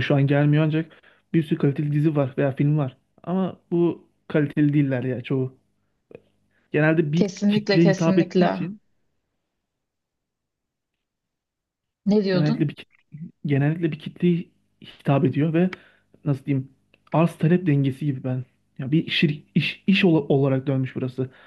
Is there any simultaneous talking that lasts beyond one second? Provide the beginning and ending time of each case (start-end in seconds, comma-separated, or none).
7.1-8.7